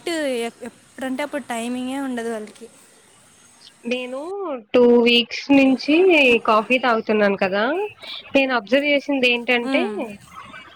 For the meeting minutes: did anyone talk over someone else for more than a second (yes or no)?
no